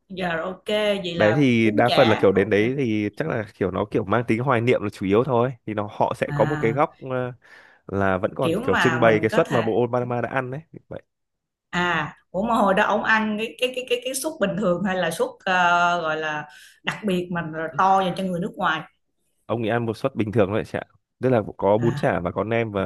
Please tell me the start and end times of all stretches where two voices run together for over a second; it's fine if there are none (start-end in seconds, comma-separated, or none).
1.1-2.5, 8.4-9.7